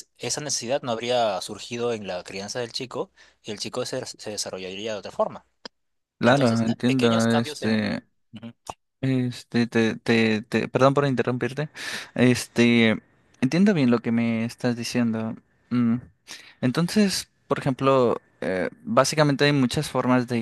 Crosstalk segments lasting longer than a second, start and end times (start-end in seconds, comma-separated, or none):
6.2-8.1